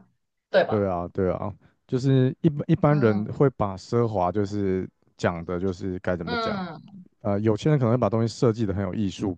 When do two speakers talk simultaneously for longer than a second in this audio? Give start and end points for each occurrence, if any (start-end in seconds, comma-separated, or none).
none